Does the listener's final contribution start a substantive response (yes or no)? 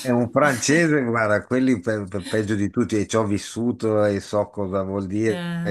no